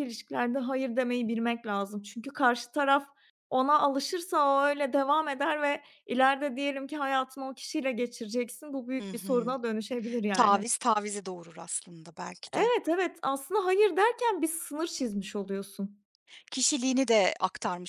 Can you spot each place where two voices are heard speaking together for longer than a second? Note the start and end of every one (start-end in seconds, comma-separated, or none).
none